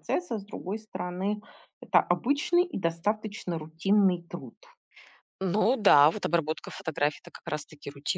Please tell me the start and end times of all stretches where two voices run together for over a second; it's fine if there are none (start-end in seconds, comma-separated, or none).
none